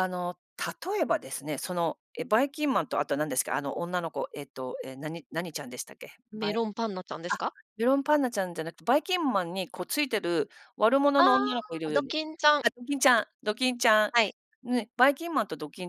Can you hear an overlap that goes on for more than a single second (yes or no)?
no